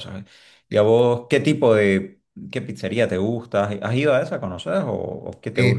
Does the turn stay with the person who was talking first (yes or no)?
no